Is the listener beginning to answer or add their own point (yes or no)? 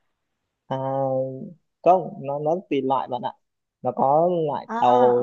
no